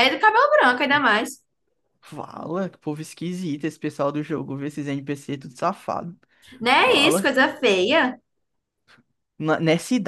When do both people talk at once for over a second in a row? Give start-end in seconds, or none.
none